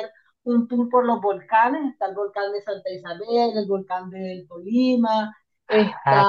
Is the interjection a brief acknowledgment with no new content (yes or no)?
no